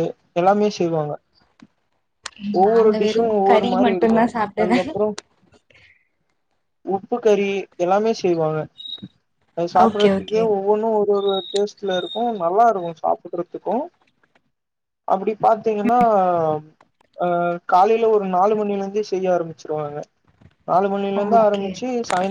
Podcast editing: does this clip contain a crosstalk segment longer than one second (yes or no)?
yes